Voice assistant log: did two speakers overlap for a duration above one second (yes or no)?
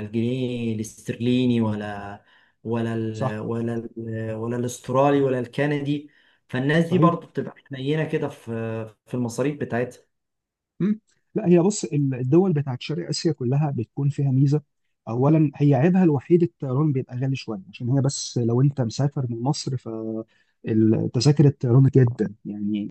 no